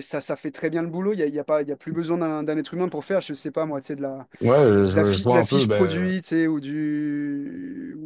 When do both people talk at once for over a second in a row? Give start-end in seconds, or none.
4.9-6.1